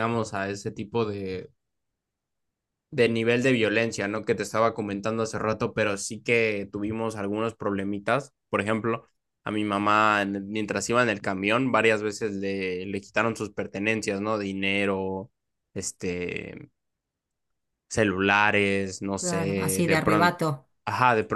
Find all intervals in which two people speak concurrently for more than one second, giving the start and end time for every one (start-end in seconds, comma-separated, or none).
19.2-20.4